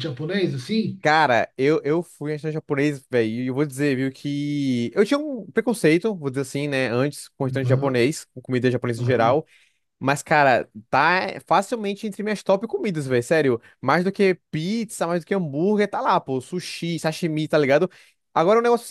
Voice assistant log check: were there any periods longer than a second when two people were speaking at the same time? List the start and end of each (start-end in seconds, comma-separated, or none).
none